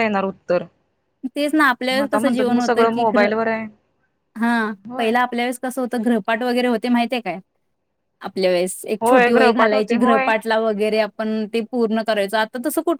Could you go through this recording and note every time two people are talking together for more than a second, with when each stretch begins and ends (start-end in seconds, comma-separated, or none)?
1.9-3.3, 9.0-10.3